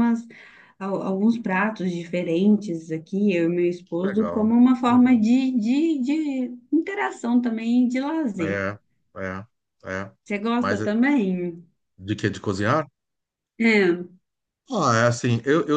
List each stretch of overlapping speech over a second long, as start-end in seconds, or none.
3.9-5.2